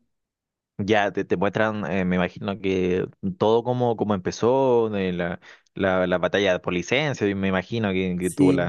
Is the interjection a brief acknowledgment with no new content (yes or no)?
no